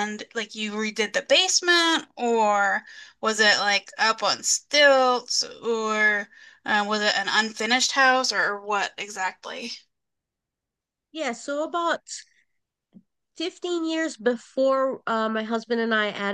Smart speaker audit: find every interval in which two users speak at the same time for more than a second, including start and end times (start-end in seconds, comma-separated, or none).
none